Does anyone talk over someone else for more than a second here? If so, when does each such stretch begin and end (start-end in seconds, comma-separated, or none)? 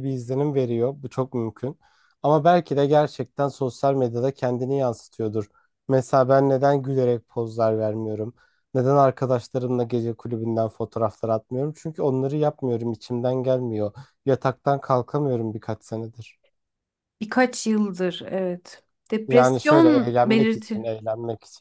19.3-20.9